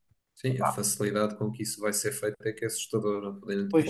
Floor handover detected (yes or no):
no